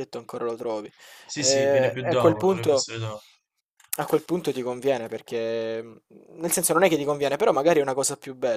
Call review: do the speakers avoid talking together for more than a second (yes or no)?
no